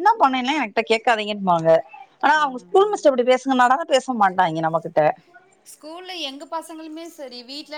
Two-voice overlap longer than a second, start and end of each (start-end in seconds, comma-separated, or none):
none